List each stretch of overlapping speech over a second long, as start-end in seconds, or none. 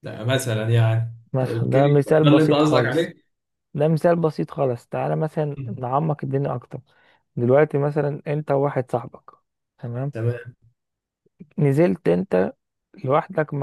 1.3-3.1